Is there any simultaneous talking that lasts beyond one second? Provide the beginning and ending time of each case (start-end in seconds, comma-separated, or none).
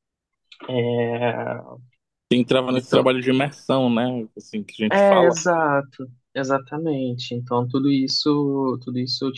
none